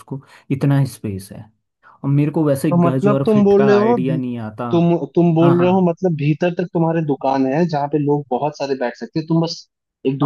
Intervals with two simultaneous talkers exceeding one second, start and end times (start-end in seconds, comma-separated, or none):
2.7-4.2